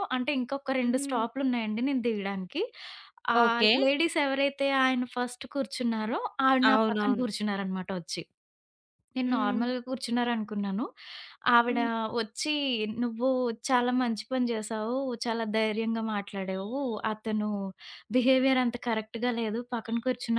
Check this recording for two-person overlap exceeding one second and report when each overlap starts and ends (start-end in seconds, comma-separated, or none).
none